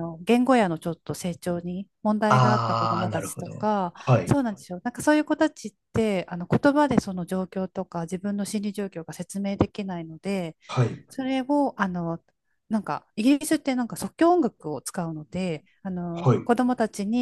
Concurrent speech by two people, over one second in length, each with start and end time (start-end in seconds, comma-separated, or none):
2.3-4.4